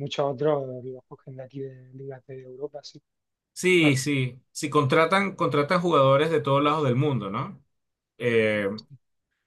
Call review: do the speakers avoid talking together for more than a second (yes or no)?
yes